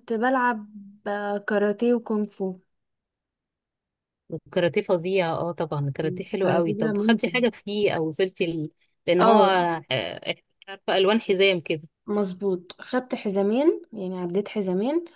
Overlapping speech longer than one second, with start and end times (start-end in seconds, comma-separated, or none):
6.0-7.3